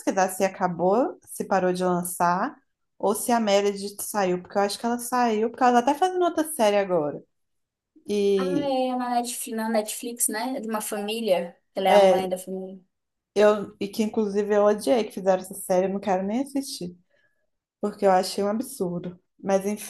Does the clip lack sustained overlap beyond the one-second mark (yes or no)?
yes